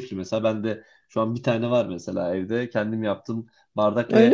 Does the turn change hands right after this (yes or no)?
no